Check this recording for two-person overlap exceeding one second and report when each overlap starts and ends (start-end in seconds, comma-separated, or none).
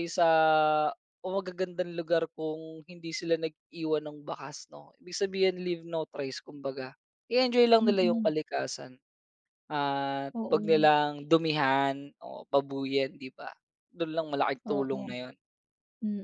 none